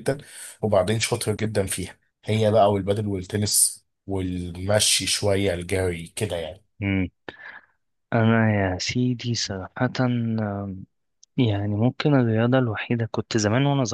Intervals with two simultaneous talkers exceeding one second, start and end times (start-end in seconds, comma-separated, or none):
none